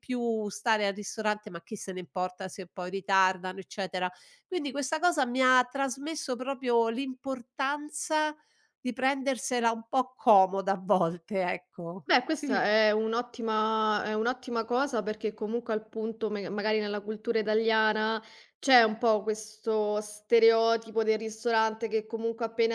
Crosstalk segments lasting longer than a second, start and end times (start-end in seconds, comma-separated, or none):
none